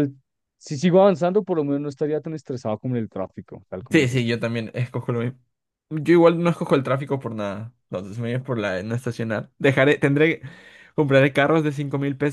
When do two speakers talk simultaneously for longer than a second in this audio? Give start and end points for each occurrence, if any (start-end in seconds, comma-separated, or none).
none